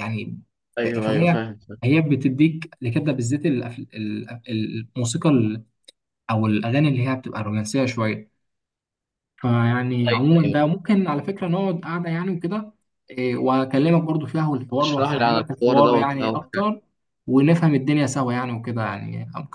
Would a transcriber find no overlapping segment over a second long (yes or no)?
no